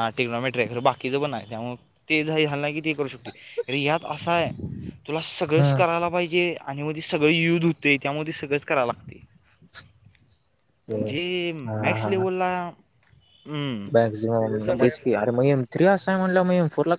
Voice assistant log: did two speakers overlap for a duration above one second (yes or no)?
no